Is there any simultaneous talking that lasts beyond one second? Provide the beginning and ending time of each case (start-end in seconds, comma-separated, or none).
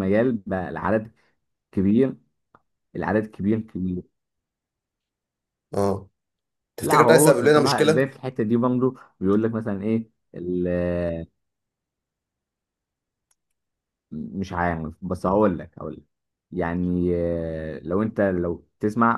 6.8-8.1